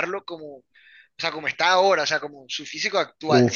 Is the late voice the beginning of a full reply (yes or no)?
yes